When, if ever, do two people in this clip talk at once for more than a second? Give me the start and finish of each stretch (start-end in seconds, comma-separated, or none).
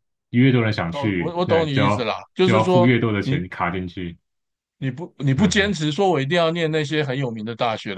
0.9-3.5